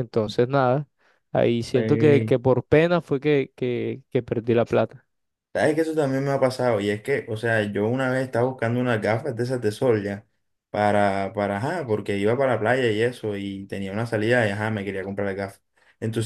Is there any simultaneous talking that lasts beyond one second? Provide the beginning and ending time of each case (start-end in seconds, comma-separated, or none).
none